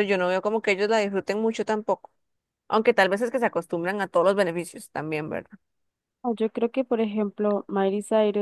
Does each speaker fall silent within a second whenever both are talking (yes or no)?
yes